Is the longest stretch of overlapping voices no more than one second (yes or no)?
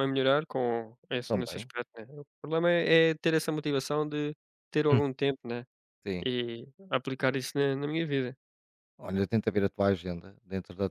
yes